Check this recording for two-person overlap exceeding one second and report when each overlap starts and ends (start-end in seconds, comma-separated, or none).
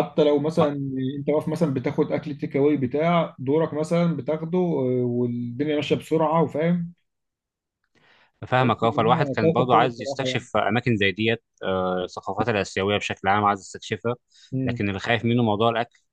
8.5-10.4